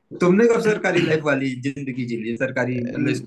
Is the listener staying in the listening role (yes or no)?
yes